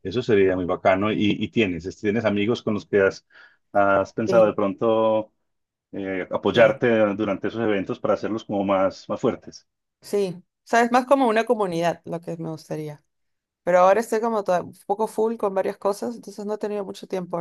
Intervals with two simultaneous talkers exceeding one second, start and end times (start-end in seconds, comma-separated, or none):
none